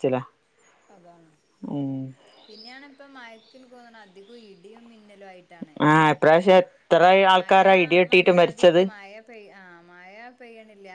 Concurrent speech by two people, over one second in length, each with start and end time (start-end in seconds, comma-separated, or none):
7.3-8.8